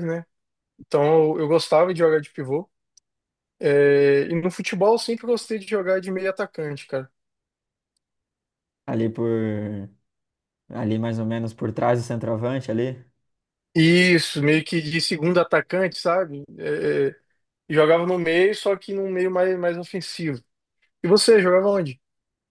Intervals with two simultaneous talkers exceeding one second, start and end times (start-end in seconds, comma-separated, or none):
none